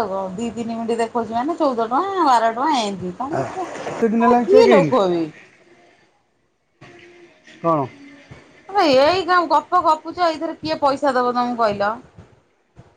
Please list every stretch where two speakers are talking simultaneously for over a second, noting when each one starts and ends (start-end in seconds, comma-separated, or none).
3.4-4.9